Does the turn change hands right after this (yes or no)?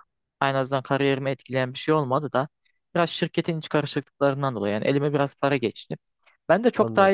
no